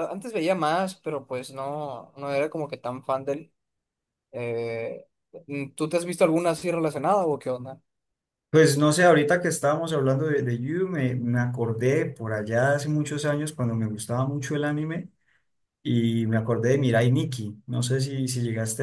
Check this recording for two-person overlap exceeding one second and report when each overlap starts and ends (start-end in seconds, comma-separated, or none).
none